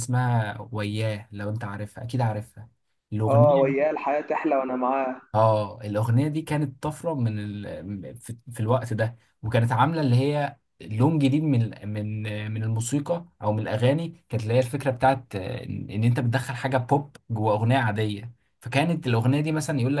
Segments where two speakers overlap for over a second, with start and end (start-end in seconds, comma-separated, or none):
none